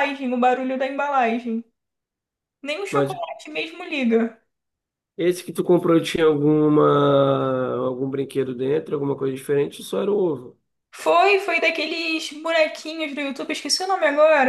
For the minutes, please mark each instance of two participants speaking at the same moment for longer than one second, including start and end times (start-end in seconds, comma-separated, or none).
none